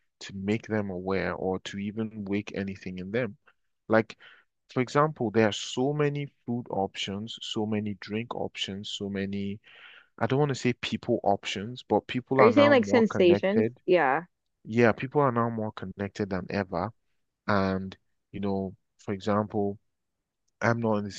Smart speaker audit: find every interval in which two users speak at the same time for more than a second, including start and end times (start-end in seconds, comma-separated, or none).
12.4-13.8